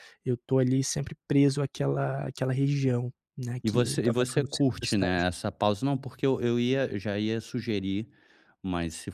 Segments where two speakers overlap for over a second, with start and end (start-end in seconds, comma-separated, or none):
3.6-5.3